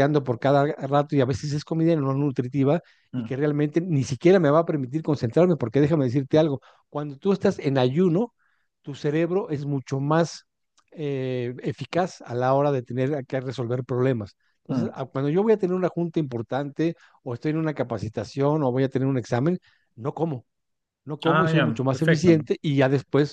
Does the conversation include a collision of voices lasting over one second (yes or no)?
yes